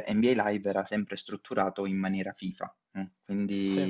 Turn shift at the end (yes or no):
no